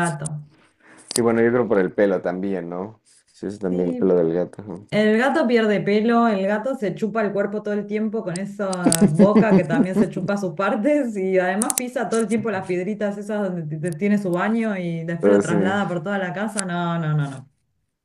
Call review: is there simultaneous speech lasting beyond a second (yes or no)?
no